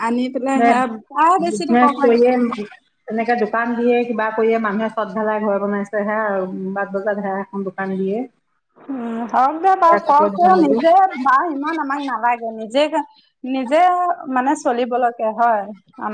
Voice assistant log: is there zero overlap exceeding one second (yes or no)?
no